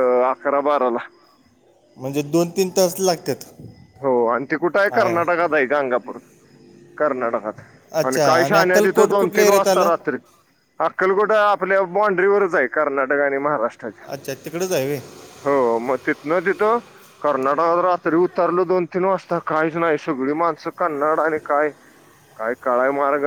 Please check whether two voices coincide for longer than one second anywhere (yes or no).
yes